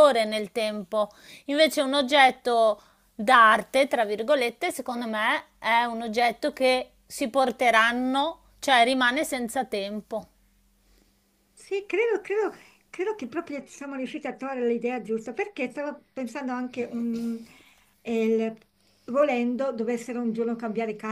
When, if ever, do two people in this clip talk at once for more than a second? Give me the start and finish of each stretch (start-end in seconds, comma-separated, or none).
none